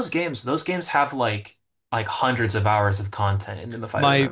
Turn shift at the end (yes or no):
yes